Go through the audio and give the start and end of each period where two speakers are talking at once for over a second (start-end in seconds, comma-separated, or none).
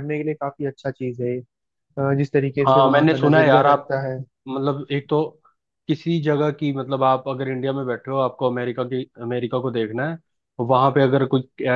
2.6-4.0